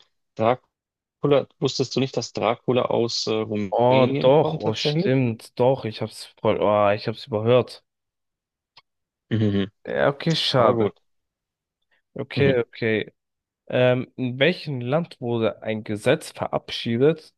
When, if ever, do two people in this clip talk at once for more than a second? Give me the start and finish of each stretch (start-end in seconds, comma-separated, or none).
3.7-5.1